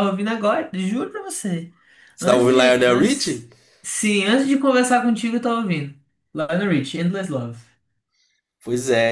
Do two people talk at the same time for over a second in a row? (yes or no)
yes